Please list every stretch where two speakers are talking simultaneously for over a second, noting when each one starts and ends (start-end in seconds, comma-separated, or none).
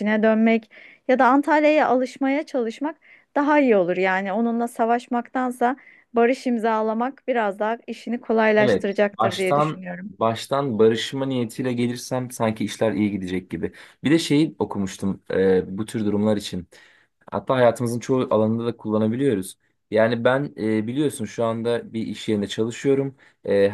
8.6-10.1